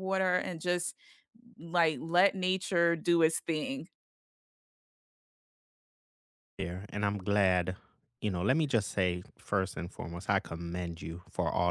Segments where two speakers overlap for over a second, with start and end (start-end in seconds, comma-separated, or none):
none